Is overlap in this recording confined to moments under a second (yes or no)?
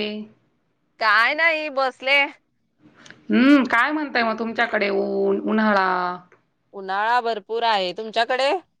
yes